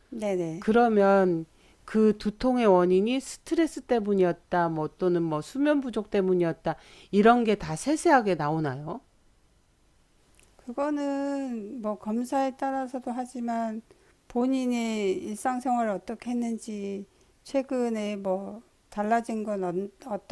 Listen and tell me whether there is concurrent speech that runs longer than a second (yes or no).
no